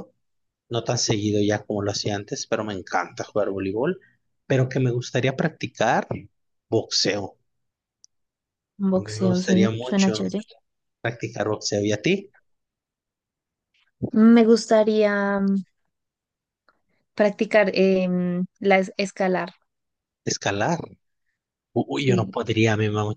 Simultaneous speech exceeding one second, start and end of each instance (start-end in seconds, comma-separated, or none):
8.9-10.2